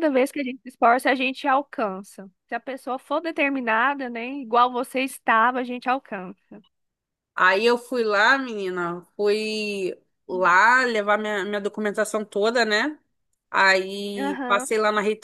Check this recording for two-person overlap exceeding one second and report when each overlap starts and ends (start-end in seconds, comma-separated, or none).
none